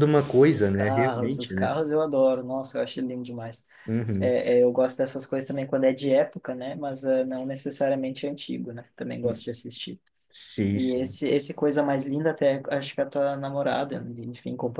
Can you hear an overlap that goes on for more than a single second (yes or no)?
yes